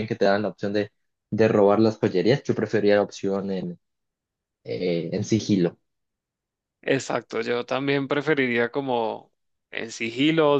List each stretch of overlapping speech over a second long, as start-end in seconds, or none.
none